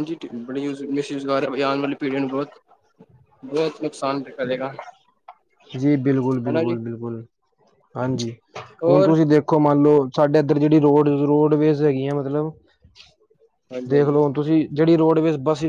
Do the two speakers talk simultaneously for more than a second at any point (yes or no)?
no